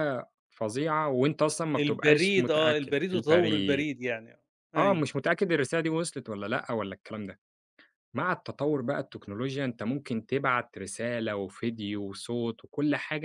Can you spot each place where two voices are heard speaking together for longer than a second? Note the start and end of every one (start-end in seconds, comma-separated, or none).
1.8-3.9